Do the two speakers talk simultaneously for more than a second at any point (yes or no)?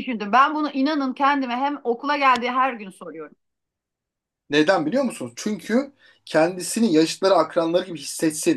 no